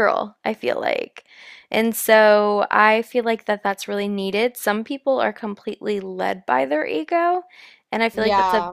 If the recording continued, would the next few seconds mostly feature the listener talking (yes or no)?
no